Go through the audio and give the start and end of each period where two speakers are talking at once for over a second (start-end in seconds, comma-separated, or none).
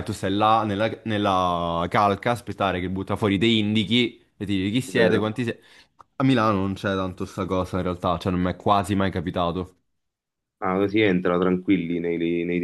none